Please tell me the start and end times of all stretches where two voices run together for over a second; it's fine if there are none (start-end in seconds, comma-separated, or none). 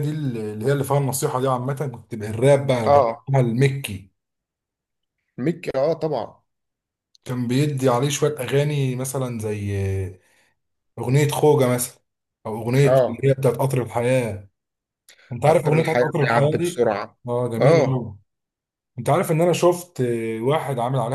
15.4-16.9